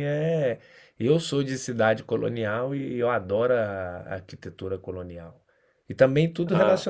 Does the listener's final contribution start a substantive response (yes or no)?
no